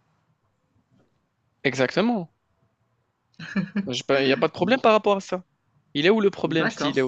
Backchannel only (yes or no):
no